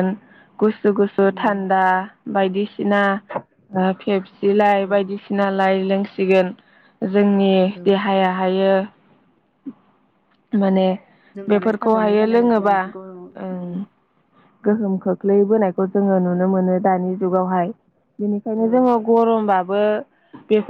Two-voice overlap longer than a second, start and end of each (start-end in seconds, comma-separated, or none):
11.5-12.8